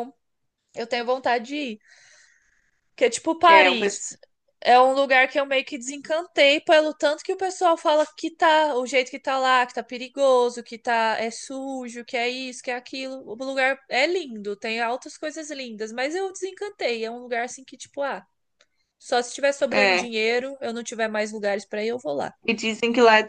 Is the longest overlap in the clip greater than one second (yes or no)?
no